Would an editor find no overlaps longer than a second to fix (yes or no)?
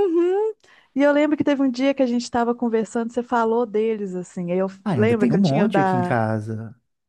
no